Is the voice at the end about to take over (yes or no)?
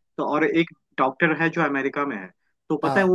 no